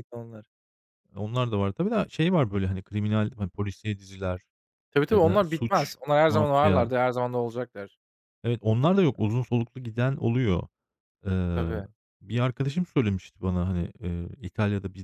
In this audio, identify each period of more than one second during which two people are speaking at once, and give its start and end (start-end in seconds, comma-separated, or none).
5.1-6.9